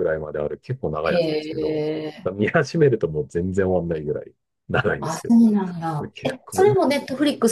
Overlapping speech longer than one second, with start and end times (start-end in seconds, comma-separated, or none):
5.0-7.0